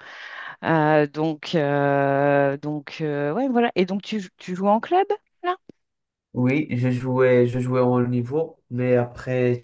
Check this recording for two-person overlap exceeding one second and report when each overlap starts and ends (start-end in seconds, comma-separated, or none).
none